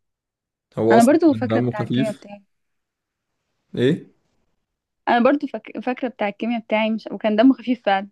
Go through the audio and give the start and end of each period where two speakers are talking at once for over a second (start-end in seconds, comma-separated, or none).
0.9-2.3